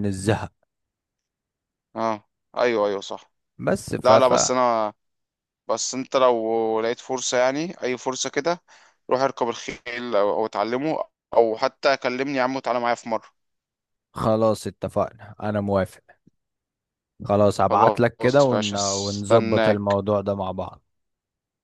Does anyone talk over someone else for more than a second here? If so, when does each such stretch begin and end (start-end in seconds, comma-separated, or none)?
17.6-20.0